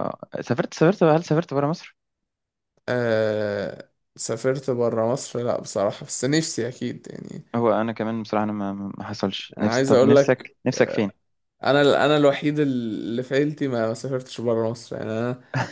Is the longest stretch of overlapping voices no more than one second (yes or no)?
no